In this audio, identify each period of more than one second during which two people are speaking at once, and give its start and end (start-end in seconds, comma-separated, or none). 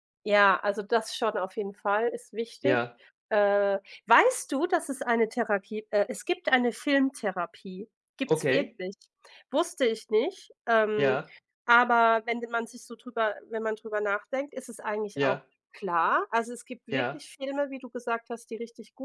none